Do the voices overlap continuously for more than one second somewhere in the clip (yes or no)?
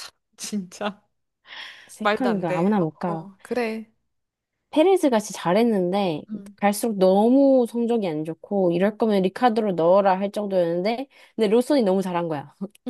yes